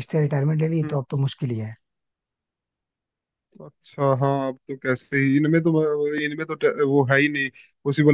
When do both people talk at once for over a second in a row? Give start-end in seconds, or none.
none